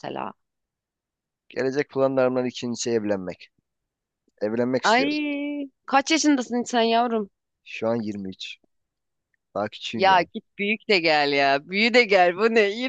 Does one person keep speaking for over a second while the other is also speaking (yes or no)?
no